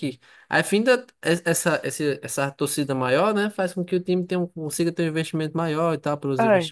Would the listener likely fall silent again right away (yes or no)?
no